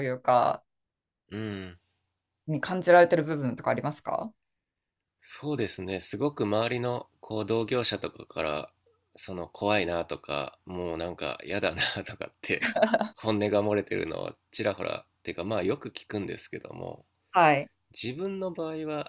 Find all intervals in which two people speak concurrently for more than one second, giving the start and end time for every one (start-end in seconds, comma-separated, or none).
none